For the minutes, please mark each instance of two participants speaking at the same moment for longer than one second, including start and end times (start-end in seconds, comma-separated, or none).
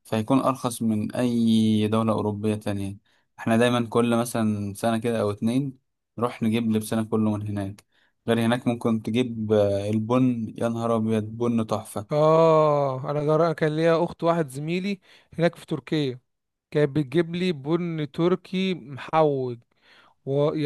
none